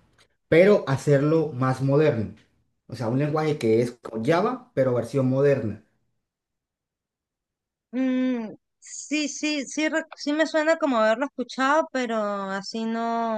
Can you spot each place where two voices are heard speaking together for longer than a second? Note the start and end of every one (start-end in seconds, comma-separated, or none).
none